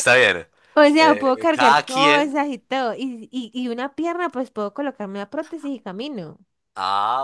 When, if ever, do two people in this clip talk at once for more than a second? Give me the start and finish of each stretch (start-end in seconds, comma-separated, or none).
1.0-2.3